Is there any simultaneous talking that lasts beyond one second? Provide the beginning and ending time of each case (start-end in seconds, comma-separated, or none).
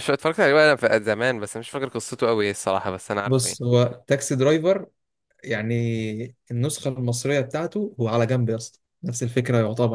none